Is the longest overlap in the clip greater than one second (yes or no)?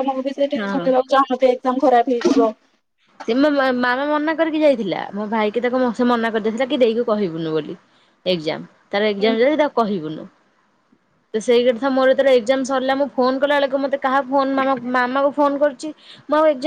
no